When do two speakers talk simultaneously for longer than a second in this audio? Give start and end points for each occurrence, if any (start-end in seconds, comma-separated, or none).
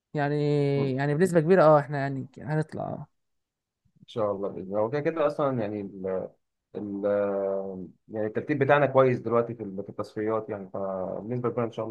none